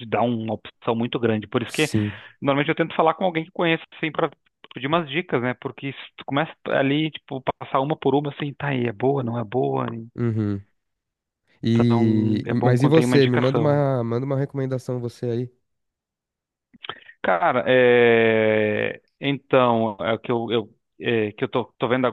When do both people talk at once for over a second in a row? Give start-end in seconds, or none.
11.7-13.8